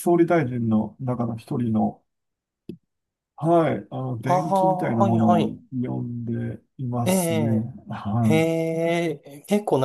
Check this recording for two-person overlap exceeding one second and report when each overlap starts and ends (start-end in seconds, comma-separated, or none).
4.2-5.6